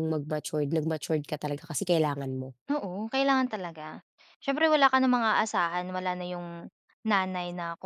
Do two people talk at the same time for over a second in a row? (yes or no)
no